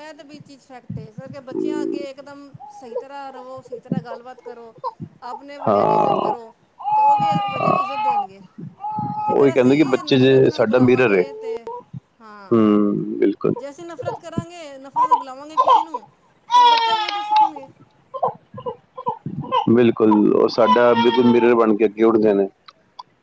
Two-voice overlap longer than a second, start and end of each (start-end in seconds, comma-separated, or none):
9.4-11.2